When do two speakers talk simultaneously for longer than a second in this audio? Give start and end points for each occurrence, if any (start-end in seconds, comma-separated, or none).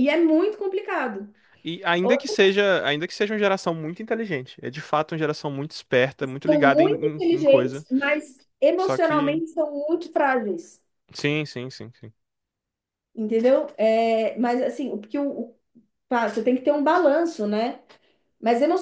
6.5-7.8